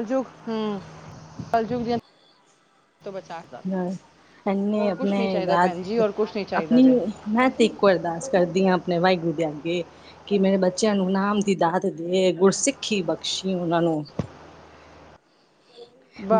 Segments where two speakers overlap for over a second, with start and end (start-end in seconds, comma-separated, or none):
4.7-6.8